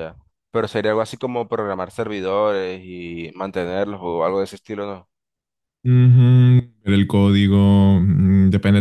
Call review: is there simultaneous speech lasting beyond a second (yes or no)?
no